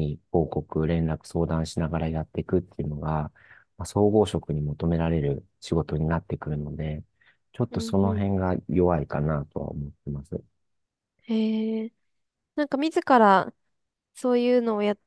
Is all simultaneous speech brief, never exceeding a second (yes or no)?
yes